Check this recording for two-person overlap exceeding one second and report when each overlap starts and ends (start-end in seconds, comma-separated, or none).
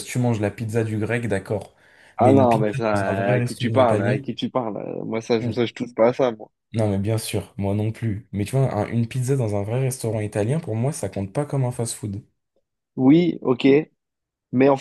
2.2-4.2